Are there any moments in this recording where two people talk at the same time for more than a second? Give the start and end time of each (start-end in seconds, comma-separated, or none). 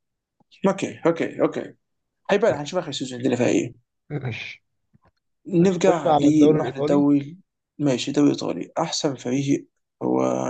5.6-7.1